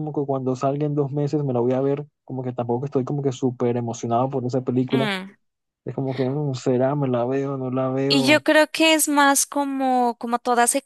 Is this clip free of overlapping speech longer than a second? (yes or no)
yes